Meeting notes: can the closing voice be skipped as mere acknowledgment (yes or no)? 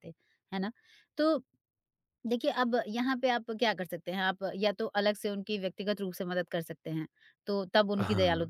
yes